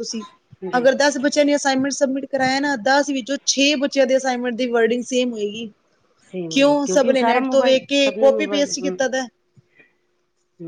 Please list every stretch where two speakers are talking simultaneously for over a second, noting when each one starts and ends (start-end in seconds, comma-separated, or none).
6.5-9.0